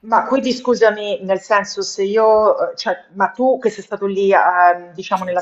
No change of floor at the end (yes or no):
yes